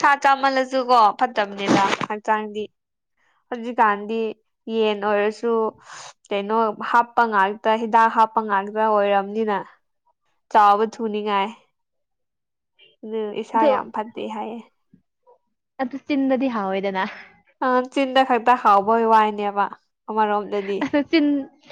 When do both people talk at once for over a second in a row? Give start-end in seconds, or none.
none